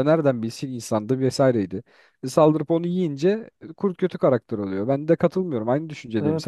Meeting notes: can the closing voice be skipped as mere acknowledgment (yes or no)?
no